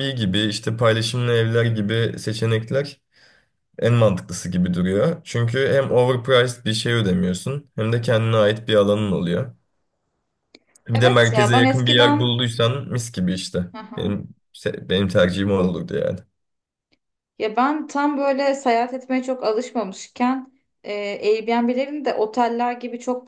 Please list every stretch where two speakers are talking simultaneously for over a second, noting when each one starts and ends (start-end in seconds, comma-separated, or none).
10.9-12.4